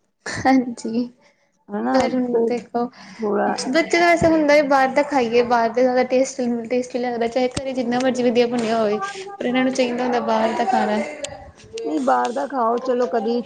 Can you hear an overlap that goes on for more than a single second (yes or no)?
no